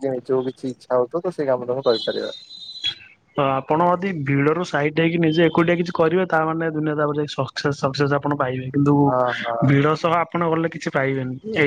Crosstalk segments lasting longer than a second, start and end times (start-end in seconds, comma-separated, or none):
none